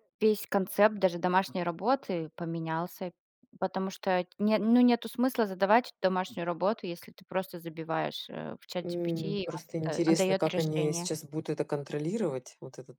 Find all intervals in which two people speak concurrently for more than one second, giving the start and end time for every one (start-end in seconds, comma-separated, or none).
8.8-11.1